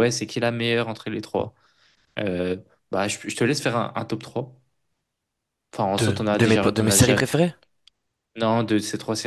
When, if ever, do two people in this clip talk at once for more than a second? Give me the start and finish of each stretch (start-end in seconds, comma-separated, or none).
6.0-7.2